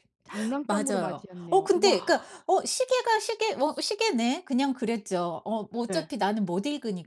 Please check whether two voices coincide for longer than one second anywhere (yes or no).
yes